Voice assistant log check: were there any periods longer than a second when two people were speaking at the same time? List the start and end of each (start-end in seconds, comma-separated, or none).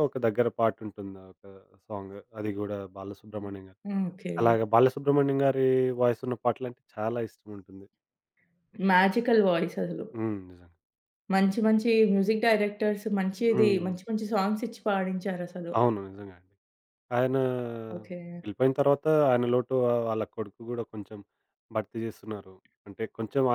none